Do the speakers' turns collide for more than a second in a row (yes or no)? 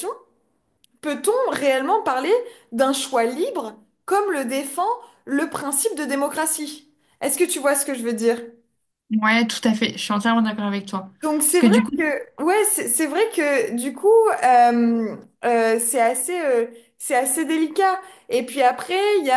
no